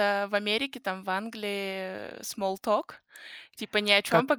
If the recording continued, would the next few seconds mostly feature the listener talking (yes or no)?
no